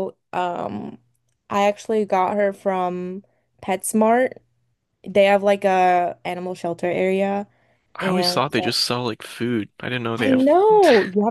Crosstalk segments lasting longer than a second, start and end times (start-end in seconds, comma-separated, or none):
none